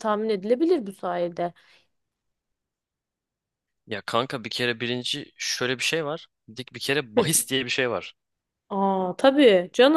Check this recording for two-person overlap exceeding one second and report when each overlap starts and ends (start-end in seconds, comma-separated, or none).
none